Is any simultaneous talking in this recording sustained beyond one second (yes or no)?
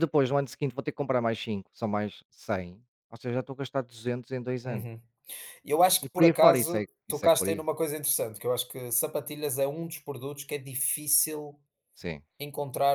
yes